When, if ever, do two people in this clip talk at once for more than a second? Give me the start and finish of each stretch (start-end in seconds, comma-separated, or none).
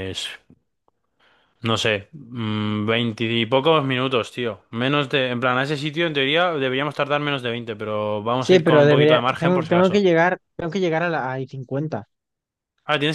8.4-10.0